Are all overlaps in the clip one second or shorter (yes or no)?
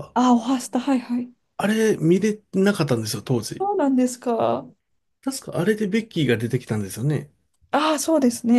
yes